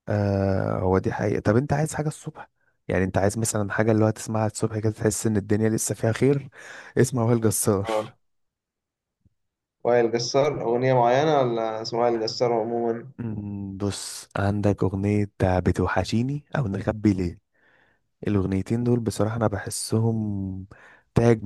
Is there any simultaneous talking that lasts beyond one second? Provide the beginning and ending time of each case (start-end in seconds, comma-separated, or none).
none